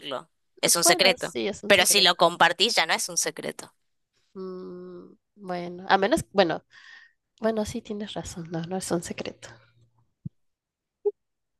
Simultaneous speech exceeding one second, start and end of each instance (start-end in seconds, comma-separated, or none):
0.6-2.1